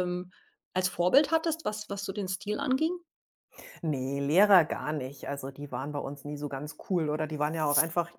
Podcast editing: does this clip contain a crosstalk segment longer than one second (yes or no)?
no